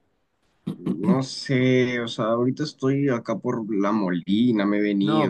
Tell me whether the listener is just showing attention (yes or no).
no